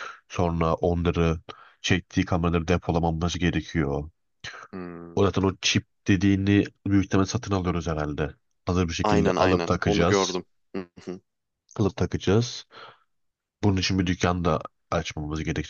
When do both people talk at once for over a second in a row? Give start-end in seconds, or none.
9.0-10.4